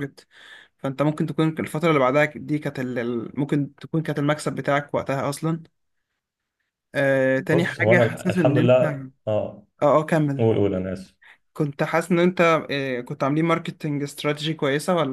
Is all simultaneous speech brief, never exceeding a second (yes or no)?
no